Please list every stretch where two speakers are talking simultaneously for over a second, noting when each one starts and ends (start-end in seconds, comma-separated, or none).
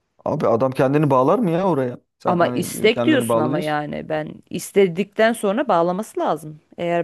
2.3-3.8